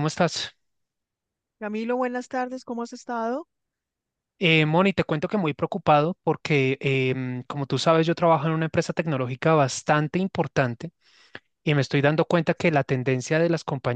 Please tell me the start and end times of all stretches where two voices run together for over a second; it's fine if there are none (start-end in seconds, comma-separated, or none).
none